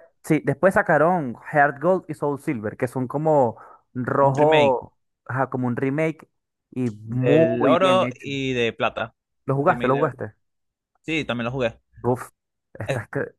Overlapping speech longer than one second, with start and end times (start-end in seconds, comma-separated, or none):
7.0-8.3